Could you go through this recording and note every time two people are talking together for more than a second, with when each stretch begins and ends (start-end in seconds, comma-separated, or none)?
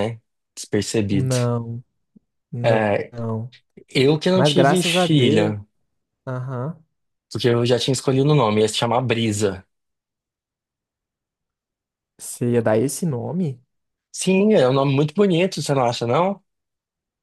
4.3-5.6